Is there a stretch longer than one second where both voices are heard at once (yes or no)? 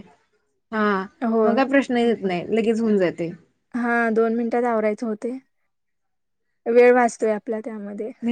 no